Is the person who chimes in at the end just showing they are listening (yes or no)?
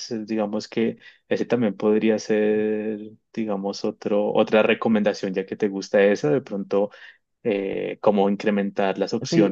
no